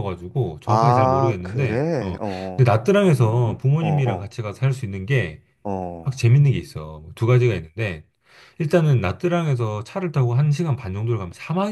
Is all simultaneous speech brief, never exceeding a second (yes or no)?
no